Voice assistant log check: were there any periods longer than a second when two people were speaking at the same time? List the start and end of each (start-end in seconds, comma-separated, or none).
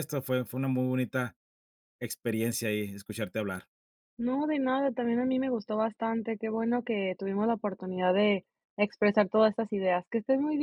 none